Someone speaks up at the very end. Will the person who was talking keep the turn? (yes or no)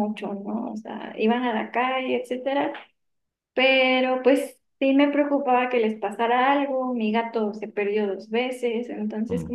yes